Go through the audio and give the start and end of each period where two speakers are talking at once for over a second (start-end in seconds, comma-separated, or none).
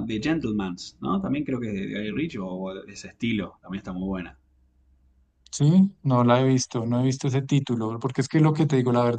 none